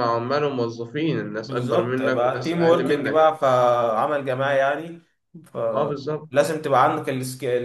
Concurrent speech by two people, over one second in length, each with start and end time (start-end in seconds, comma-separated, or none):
1.5-3.3